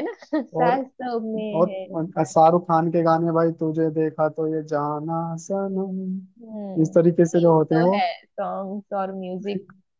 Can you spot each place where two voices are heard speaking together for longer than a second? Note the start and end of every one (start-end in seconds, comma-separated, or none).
6.4-8.0